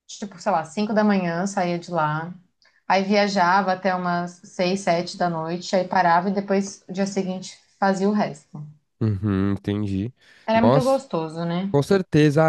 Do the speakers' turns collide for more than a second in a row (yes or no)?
no